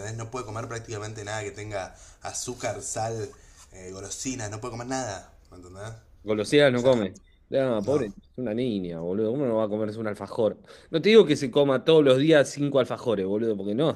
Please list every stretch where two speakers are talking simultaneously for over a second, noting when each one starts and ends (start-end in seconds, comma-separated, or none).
none